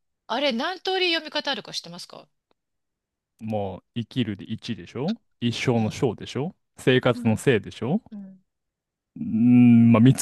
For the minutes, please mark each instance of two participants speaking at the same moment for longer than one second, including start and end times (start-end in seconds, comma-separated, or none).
none